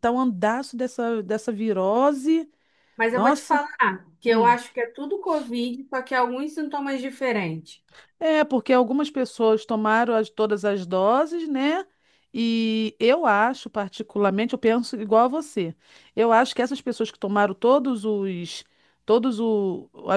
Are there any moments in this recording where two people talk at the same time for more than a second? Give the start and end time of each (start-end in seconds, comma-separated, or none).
none